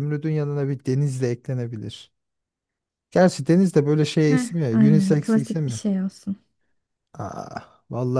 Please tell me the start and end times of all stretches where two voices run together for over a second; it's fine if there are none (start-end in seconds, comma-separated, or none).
4.2-5.8